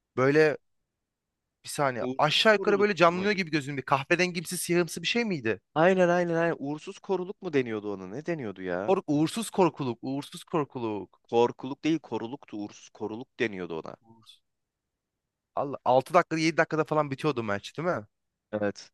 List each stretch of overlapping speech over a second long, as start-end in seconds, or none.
2.0-3.4